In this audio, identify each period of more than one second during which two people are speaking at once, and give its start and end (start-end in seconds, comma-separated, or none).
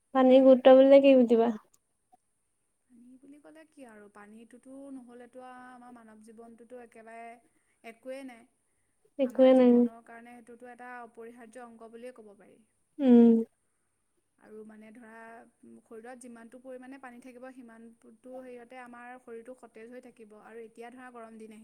none